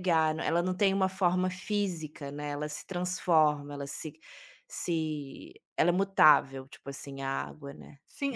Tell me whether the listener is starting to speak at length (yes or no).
yes